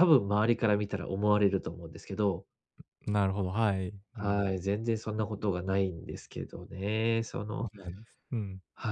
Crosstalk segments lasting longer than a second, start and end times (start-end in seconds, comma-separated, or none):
none